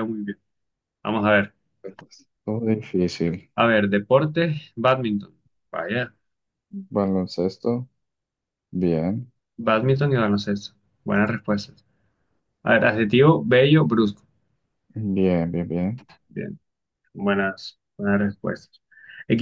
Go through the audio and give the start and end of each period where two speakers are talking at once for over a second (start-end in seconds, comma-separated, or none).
none